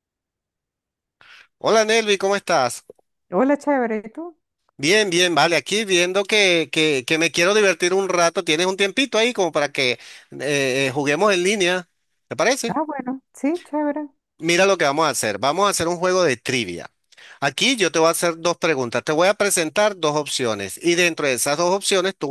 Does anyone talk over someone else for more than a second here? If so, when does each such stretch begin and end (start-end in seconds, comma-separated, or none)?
none